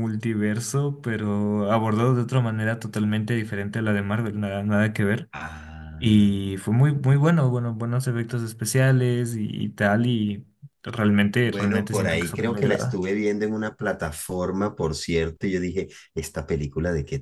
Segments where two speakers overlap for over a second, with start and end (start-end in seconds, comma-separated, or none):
11.4-13.0